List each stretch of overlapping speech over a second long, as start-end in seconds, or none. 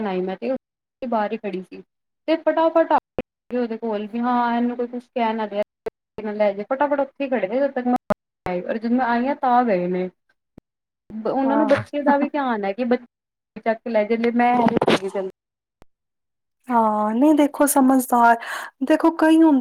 none